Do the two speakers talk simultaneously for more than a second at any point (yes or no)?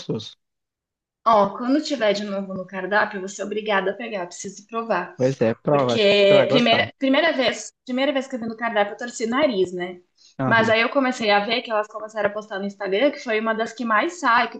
yes